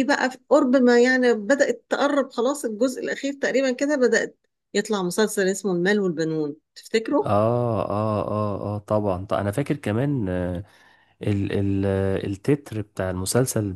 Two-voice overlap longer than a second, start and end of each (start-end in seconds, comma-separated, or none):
none